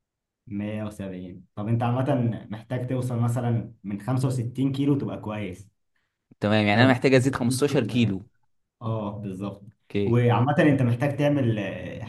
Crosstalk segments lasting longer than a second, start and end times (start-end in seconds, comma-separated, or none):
6.7-8.2